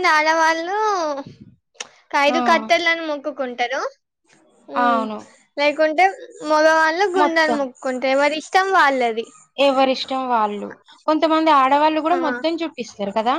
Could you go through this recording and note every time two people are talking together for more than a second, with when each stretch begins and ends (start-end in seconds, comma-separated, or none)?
none